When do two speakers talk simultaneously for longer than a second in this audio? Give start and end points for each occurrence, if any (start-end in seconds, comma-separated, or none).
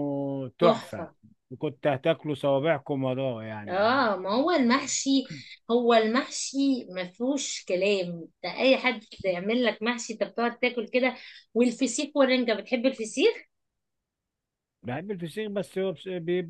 none